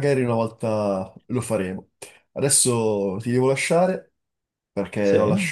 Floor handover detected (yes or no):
no